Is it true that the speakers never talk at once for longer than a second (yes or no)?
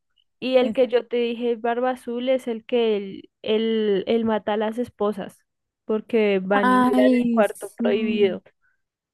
no